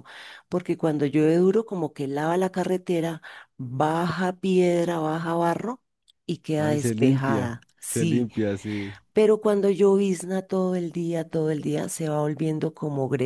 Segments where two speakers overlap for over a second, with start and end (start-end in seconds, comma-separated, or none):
6.6-8.3